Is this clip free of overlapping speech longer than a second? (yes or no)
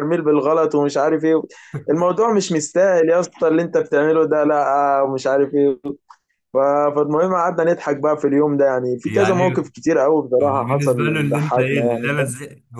no